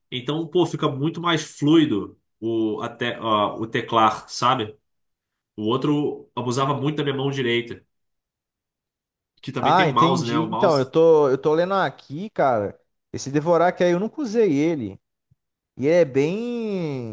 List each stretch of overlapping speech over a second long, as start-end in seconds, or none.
9.6-10.9